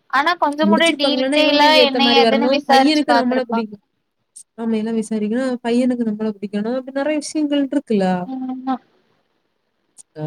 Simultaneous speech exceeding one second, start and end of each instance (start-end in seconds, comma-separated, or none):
0.7-2.6